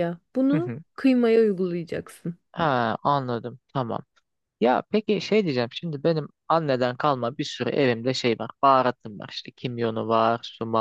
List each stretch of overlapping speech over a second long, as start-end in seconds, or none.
none